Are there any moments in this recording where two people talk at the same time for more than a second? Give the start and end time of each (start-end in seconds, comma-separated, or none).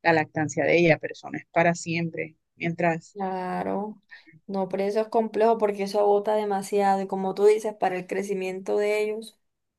none